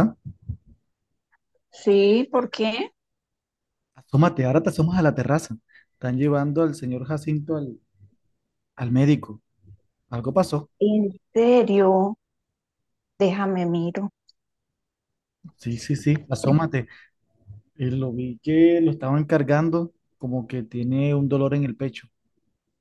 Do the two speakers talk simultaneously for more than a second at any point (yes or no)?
no